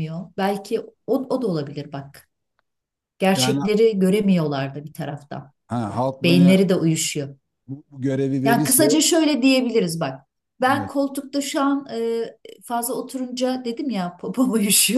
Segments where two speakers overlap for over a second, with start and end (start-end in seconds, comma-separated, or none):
none